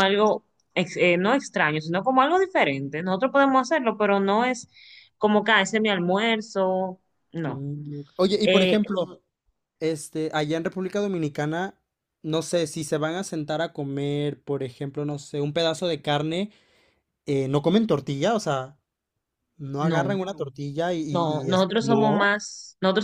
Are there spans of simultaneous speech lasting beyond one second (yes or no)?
yes